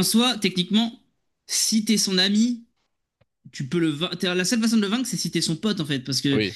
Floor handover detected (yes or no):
no